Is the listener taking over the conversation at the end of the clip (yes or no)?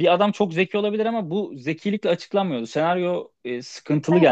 no